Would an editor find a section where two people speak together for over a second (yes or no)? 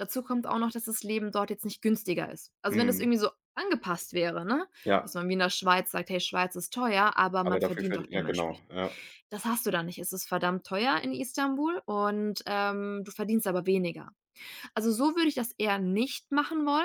yes